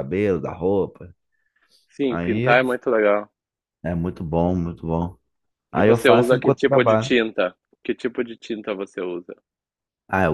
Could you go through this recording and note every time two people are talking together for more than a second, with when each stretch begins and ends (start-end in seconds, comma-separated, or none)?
5.7-7.1